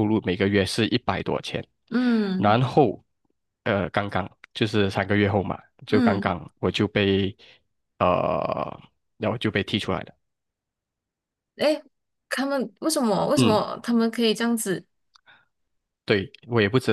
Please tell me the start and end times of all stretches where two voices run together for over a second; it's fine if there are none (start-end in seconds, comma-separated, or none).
none